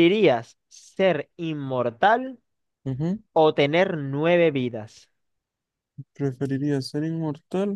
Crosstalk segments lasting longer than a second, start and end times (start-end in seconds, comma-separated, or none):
none